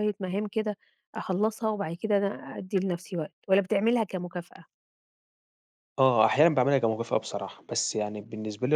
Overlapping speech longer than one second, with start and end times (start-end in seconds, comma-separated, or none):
none